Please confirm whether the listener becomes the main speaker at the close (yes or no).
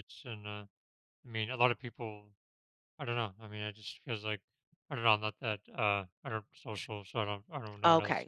yes